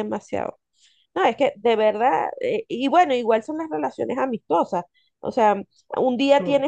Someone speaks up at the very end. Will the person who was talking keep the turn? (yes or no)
yes